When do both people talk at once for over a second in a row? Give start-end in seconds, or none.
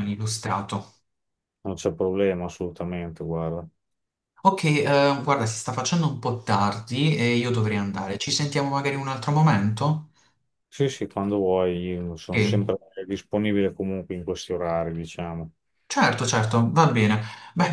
none